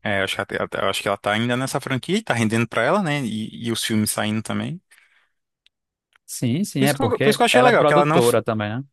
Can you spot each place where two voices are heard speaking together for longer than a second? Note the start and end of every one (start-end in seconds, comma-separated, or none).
6.8-8.4